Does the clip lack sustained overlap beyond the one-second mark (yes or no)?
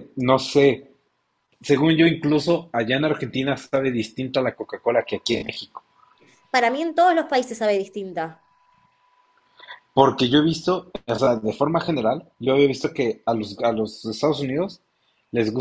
yes